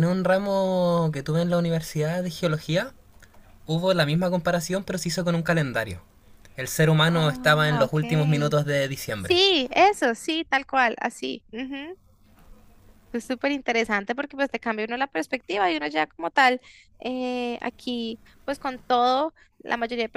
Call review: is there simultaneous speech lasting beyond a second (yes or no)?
yes